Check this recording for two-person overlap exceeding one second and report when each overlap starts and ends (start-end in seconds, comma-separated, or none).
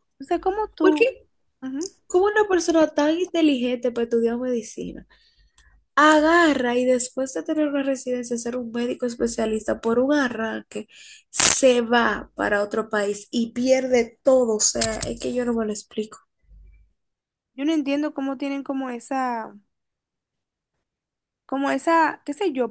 none